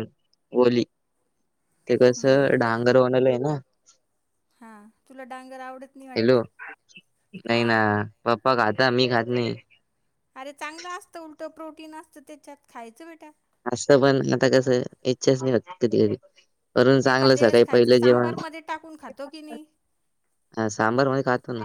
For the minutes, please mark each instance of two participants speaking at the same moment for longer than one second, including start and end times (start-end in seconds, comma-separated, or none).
17.1-18.3